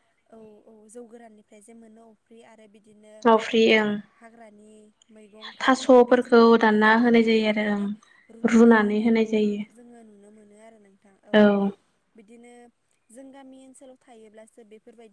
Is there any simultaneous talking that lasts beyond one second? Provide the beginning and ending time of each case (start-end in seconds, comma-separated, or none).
5.6-7.8